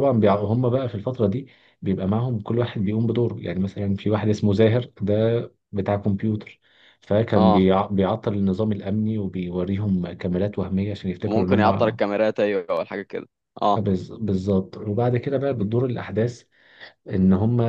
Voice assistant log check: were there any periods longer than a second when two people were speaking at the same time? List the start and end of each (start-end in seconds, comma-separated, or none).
none